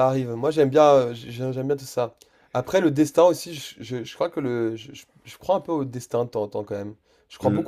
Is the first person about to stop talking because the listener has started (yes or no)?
yes